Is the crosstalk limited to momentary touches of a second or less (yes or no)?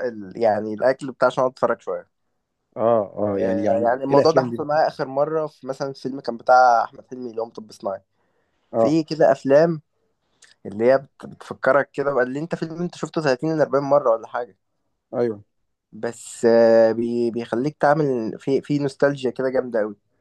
no